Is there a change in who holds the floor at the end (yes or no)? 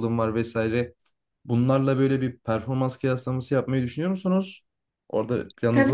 yes